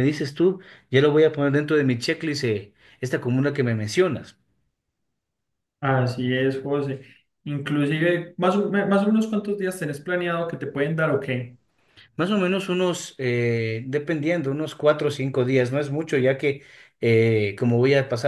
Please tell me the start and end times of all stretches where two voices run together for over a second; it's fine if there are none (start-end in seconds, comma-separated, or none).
none